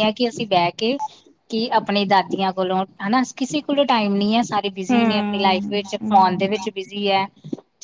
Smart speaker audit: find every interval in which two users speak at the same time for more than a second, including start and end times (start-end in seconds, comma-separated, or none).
4.9-6.5